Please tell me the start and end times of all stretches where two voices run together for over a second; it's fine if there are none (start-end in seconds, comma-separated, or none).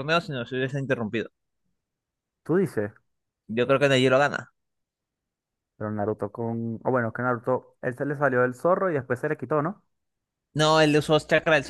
none